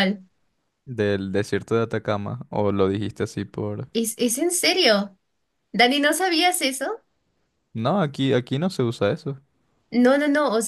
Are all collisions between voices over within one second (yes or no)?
yes